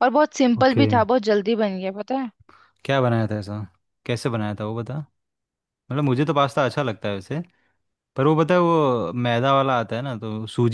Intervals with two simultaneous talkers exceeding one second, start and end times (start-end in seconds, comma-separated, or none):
none